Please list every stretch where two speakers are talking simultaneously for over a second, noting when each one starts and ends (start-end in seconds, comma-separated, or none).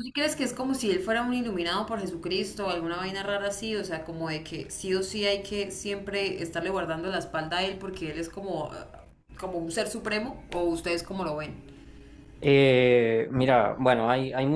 none